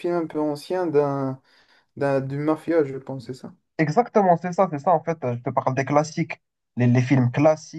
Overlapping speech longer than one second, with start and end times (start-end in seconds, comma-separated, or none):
none